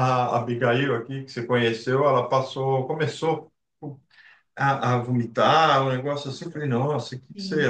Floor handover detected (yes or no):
no